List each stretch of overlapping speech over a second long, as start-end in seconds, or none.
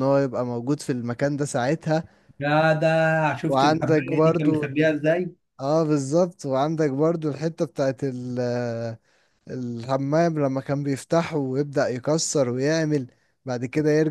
3.5-5.0